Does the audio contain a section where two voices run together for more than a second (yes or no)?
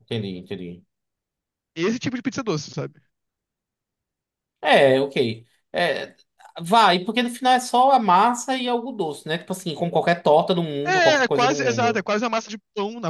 yes